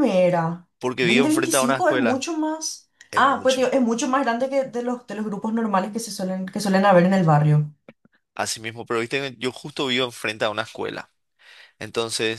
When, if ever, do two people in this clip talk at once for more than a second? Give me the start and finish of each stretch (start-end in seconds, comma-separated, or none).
1.0-2.3